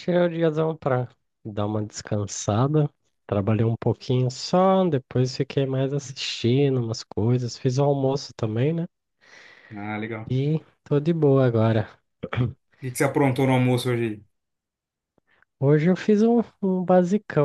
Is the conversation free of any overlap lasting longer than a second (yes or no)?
yes